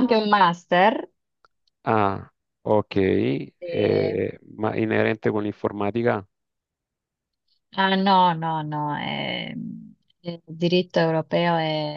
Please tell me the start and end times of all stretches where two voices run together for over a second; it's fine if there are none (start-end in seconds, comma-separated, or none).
none